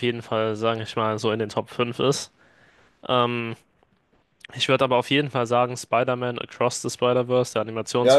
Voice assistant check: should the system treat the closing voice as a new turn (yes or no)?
yes